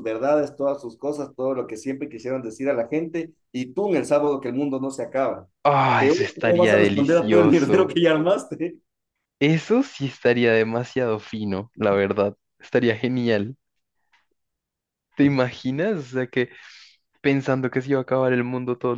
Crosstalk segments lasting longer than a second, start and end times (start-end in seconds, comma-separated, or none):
6.0-8.0